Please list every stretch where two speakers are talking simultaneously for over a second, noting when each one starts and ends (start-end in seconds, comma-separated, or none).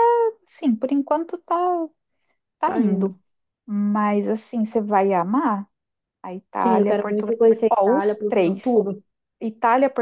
6.6-8.8